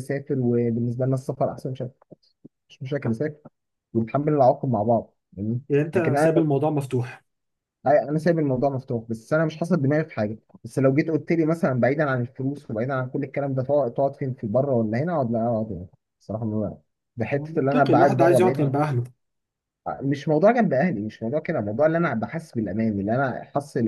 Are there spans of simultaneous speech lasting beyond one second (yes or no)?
yes